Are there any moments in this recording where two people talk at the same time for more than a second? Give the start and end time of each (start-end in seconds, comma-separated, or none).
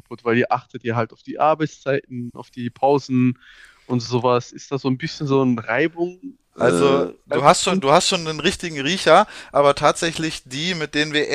6.6-7.9